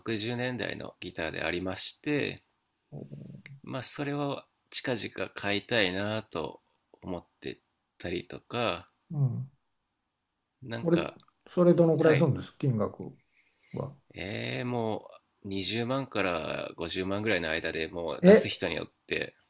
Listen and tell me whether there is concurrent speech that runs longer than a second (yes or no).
no